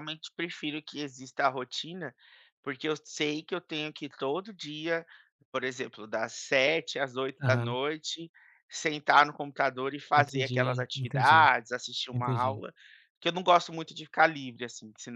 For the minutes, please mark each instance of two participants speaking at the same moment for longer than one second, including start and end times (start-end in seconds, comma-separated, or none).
10.2-11.5